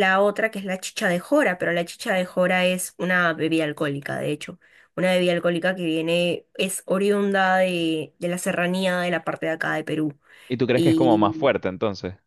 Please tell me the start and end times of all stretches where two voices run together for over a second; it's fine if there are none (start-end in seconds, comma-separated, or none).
none